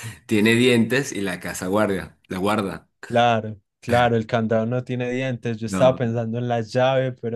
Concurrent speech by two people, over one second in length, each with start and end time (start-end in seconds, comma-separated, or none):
none